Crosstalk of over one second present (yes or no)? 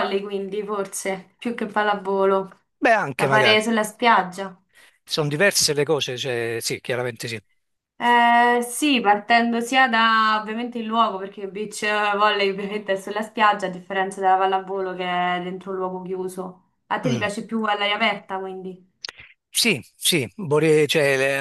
no